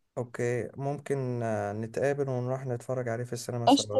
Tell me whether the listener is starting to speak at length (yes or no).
yes